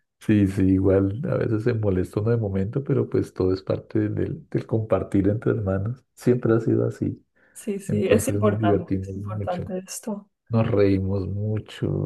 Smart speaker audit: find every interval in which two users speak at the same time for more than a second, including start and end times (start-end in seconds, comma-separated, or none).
7.9-9.7